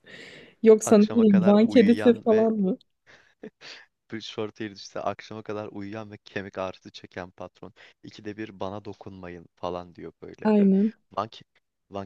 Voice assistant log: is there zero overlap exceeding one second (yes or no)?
no